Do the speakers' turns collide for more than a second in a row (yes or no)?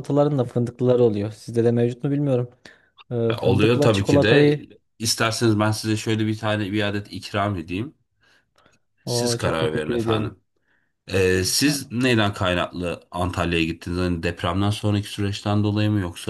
yes